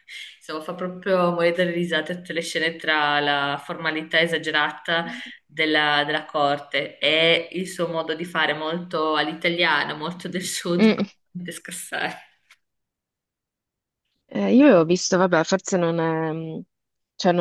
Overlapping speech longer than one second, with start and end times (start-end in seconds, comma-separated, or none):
none